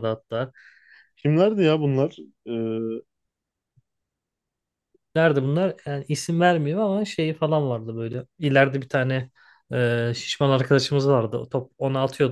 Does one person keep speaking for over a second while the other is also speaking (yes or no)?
no